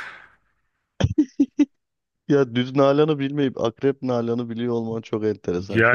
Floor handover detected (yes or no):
yes